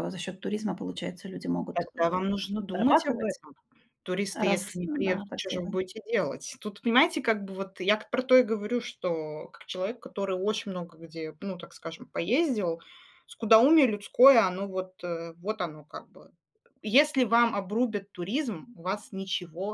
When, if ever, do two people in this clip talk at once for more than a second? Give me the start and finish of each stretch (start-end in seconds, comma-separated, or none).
1.7-3.4, 4.3-5.8